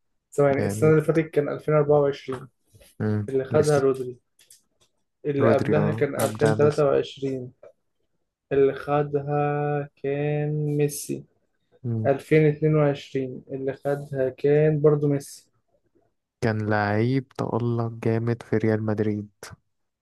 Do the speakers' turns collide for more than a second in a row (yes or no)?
yes